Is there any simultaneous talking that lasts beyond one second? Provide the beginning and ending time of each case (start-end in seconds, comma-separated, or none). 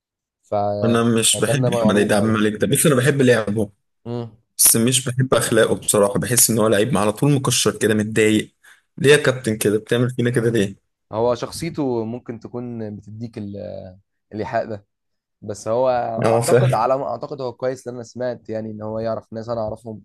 0.8-2.4